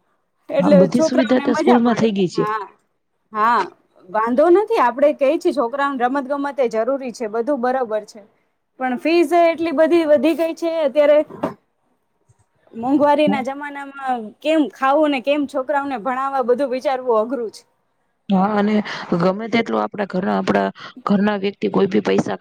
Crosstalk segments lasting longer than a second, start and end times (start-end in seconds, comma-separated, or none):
0.8-2.4